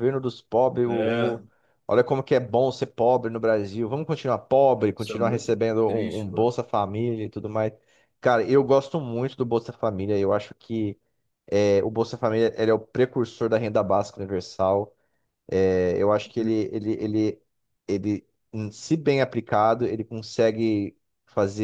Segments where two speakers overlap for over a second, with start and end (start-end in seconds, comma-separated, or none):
5.0-6.5